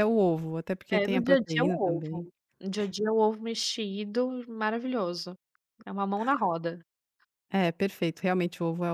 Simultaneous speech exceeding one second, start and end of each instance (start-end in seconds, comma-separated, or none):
0.9-2.3